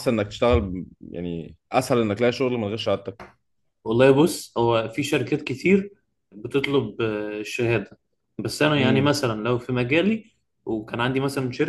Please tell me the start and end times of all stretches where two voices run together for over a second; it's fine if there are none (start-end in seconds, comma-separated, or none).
none